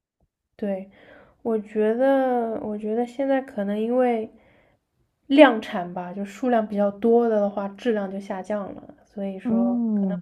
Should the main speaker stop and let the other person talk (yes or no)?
yes